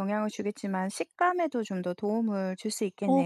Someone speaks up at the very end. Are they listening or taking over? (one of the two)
taking over